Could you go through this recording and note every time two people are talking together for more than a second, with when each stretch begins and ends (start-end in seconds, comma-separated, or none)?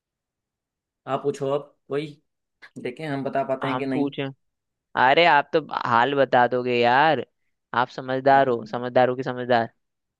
none